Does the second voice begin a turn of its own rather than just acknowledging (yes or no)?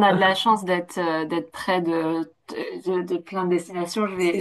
no